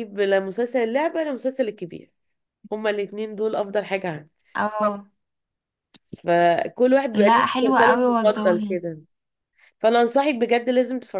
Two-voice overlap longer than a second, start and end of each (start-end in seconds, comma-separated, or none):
7.1-8.8